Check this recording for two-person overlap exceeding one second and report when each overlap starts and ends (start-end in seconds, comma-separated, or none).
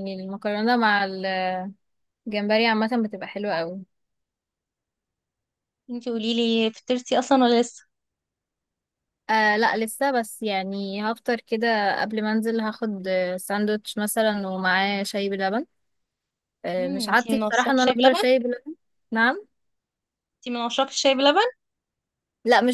16.8-18.2